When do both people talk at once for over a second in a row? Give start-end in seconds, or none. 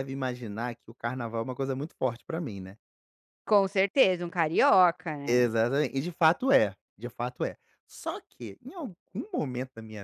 none